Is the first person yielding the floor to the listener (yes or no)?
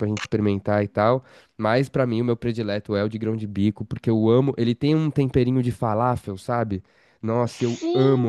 yes